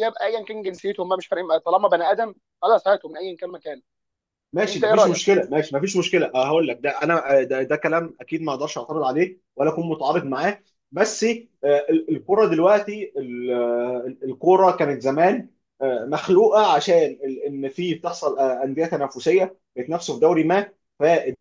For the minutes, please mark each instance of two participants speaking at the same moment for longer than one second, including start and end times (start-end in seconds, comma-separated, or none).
none